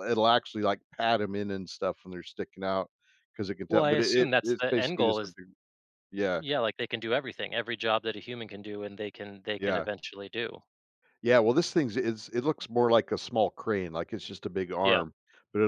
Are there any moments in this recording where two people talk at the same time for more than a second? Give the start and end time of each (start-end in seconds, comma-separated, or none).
3.7-5.3